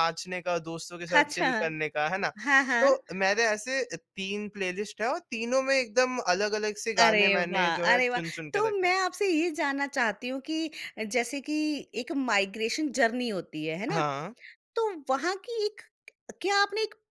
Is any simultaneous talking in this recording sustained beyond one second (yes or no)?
yes